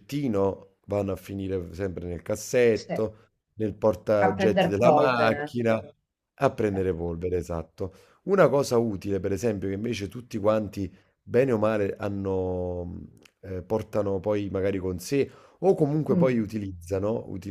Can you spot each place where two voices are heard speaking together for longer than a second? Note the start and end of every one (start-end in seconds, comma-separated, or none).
4.2-5.5